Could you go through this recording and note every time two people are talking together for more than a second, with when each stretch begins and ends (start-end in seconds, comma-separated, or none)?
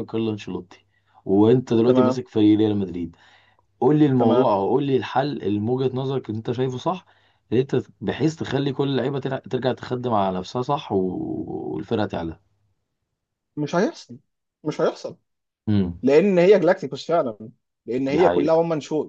none